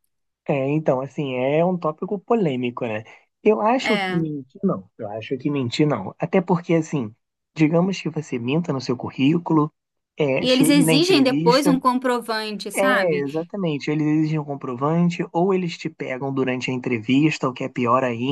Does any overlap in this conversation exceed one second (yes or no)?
yes